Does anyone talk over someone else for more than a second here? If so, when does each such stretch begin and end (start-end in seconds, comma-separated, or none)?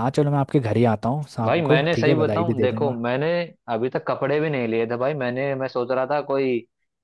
1.4-3.0